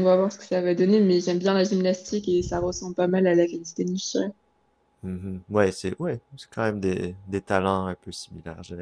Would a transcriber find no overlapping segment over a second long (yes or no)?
yes